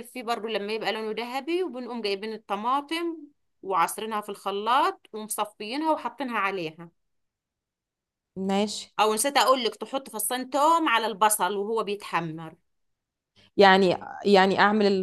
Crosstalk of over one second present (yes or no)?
no